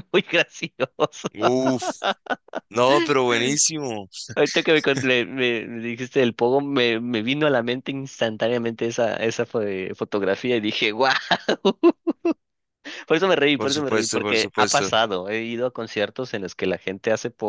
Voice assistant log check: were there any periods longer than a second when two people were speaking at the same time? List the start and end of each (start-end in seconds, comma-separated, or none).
13.6-14.9